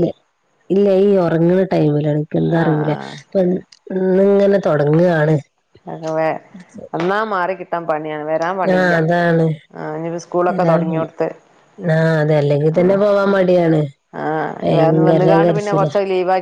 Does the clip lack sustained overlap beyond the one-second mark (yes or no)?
no